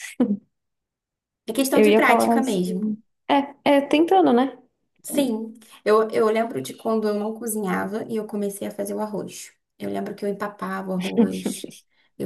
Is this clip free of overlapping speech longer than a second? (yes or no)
no